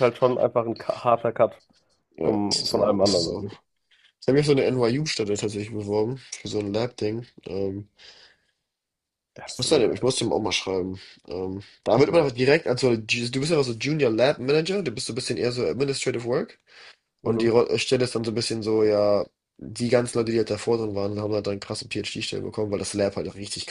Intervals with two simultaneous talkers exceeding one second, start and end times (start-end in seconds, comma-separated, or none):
2.2-3.5